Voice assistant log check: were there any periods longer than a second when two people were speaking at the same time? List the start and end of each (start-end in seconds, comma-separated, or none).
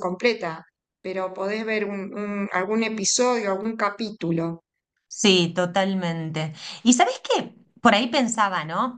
none